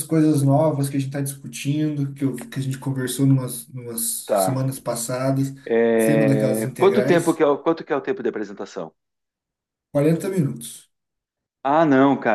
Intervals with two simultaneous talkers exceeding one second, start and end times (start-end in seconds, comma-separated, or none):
6.0-7.4